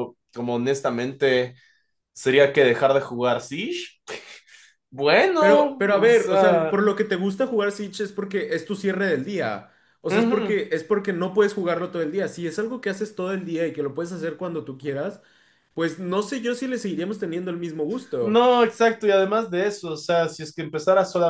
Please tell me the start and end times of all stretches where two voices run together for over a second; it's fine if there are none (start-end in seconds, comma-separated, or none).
5.4-6.8